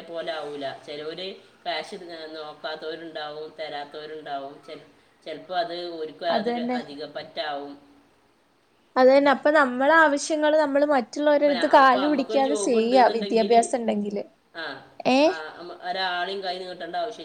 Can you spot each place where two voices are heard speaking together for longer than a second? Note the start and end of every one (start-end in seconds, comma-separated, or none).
11.4-13.5